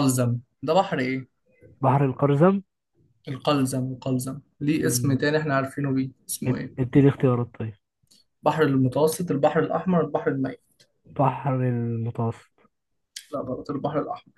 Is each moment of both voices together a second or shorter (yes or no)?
yes